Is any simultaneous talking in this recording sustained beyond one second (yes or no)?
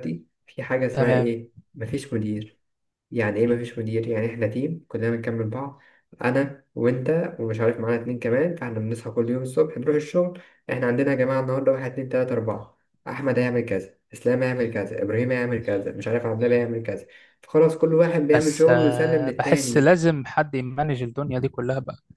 yes